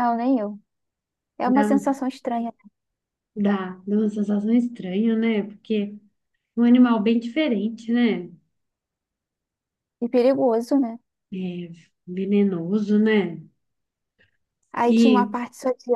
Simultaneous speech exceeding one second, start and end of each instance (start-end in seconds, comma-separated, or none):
none